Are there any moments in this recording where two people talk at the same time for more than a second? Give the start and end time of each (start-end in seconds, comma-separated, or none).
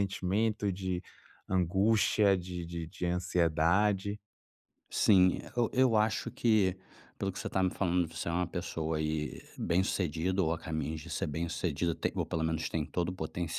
none